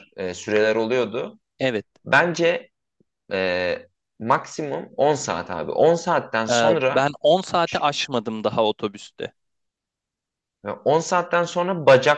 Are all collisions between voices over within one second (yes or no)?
yes